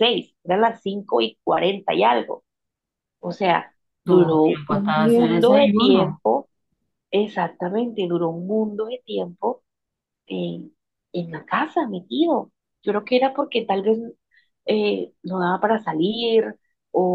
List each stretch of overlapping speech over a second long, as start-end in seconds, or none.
4.0-6.2